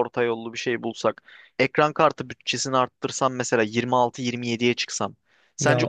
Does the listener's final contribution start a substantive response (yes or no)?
no